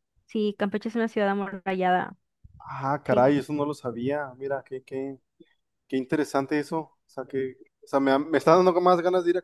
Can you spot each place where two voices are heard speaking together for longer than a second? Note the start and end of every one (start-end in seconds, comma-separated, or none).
none